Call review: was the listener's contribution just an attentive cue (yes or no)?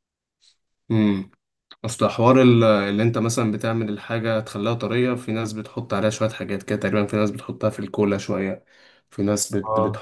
yes